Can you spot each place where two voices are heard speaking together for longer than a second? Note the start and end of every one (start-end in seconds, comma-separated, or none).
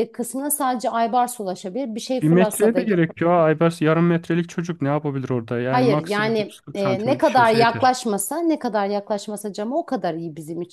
5.7-7.9